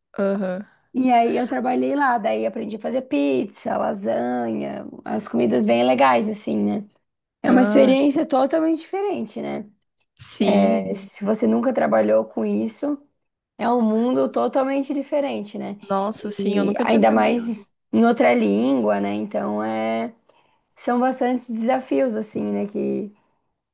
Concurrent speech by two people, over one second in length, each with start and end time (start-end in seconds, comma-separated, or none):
16.2-17.7